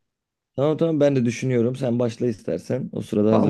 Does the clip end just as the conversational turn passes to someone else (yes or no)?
yes